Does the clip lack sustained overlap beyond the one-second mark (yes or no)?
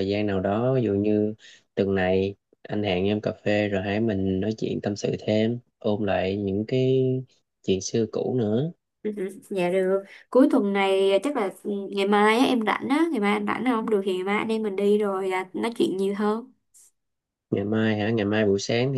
yes